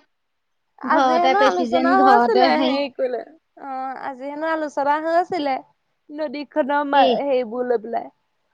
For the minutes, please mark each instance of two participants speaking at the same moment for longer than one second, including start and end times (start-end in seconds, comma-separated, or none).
0.9-2.7